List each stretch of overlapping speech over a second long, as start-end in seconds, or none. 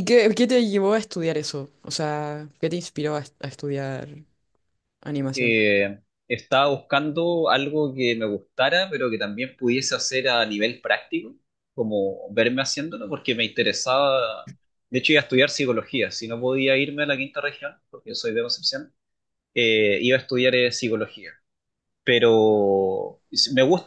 none